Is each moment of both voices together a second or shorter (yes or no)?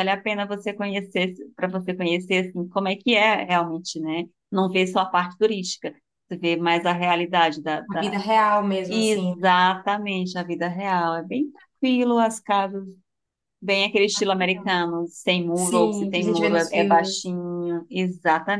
no